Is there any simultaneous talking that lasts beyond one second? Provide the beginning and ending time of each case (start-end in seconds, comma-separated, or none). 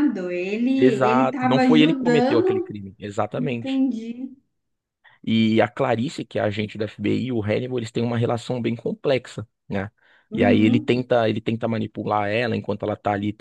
0.8-2.8